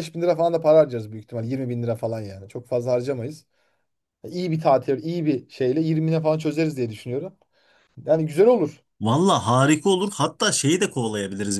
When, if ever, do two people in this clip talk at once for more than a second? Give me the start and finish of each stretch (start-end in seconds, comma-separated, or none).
none